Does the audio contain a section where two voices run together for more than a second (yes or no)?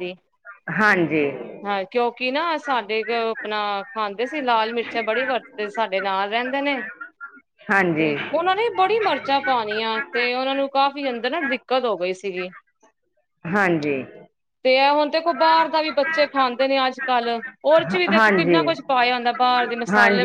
no